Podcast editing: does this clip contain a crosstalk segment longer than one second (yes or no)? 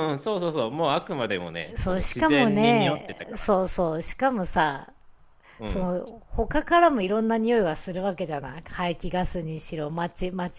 yes